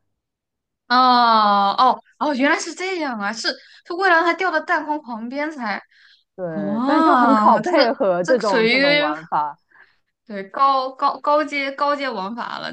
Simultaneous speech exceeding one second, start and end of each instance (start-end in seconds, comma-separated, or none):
6.5-8.7